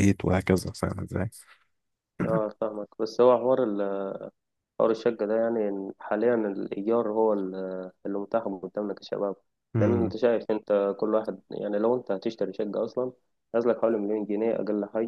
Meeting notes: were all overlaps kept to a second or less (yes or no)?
yes